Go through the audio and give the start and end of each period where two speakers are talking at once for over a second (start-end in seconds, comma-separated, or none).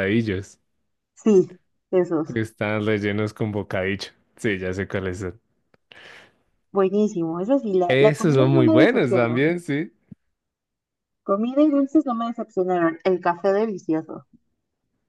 7.9-9.5